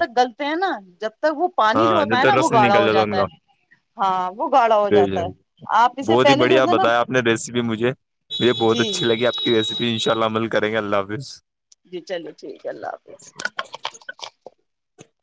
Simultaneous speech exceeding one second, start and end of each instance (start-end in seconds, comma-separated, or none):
1.7-3.2